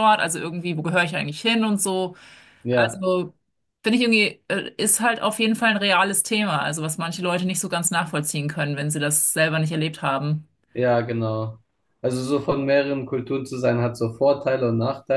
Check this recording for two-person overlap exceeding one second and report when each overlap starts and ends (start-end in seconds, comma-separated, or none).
none